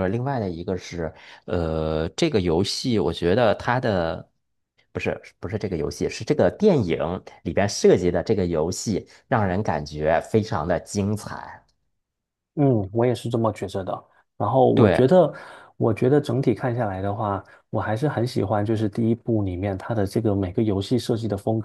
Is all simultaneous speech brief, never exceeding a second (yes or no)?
yes